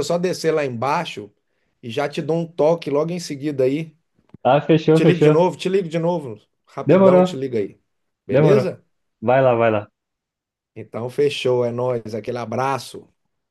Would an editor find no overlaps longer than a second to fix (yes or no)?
yes